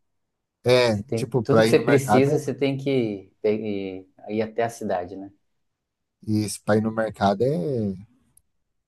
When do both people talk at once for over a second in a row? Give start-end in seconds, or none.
0.9-2.4